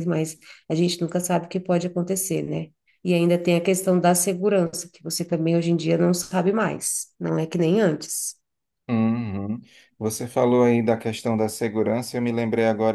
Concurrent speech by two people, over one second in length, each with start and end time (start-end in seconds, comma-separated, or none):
none